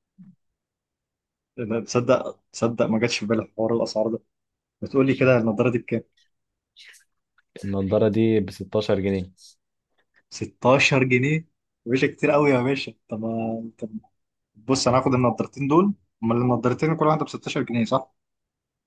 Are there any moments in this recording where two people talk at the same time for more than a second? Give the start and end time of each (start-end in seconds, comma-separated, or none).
none